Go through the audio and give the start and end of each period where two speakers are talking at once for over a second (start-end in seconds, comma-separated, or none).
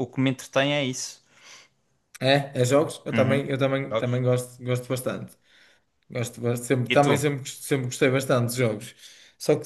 none